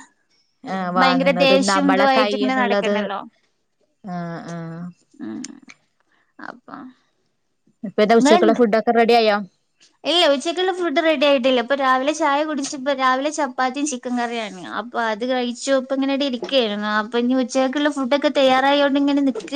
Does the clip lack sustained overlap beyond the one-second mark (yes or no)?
no